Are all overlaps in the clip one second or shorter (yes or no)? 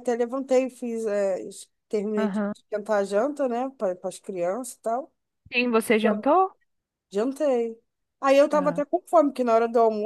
yes